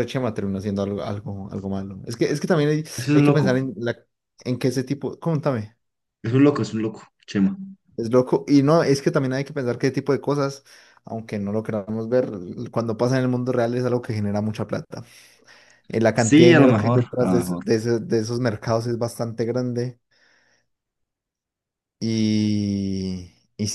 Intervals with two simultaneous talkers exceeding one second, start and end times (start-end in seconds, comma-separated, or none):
16.1-17.6